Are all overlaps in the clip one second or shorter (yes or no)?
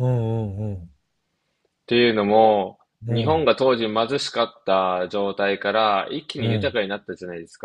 yes